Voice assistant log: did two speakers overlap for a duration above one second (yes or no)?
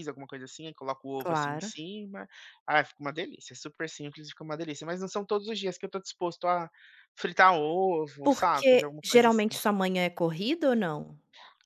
yes